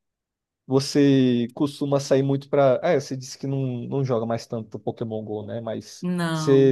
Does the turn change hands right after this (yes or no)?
no